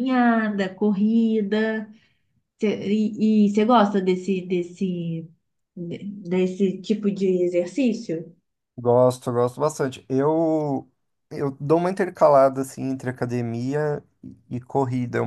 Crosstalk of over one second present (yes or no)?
no